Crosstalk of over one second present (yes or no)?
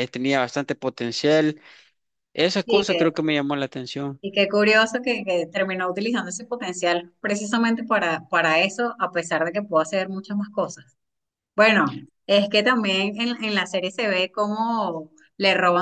no